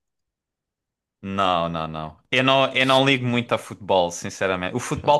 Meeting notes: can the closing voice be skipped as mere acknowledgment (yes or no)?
yes